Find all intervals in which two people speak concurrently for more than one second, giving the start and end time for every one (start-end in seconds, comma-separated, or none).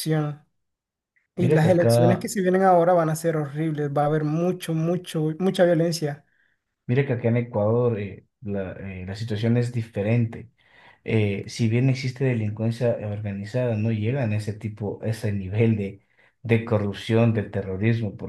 none